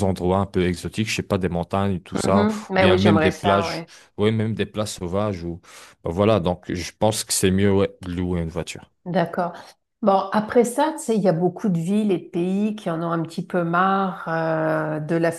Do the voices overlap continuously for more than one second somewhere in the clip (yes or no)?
yes